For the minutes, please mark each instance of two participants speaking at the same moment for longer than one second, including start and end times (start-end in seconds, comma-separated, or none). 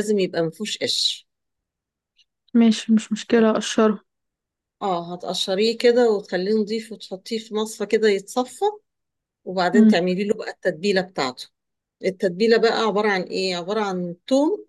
none